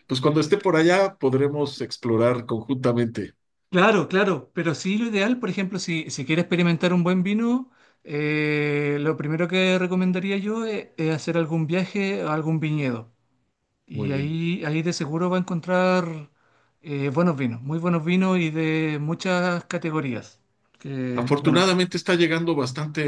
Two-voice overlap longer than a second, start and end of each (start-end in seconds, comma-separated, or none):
none